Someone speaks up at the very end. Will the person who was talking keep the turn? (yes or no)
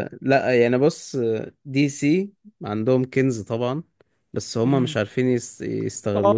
no